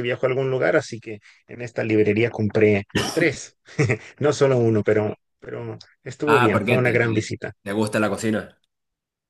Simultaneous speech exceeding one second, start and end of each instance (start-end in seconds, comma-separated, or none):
6.2-7.5